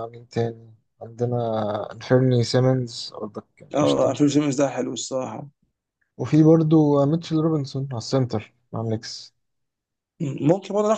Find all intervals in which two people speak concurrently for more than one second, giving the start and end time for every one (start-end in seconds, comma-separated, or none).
none